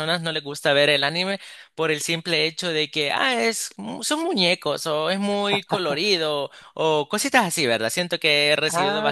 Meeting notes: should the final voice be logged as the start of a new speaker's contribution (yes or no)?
yes